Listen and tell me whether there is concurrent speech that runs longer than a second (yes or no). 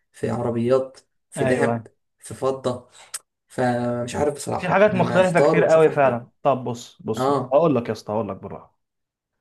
yes